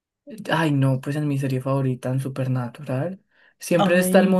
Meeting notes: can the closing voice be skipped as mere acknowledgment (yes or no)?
yes